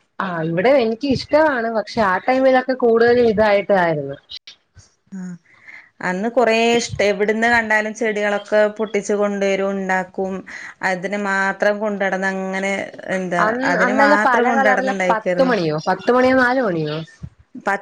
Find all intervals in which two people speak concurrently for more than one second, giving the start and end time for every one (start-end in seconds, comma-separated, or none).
13.5-15.5